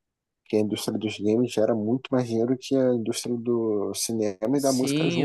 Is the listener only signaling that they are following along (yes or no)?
no